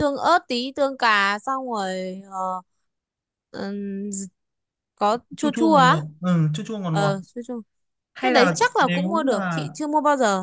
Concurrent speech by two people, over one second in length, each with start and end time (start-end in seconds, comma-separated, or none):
8.2-9.7